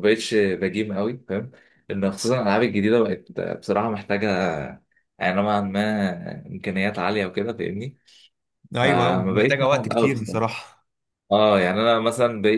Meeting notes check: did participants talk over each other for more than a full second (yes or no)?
yes